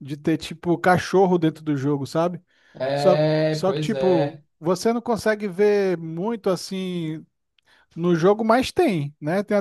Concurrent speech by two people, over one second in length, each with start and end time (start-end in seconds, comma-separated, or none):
2.9-4.4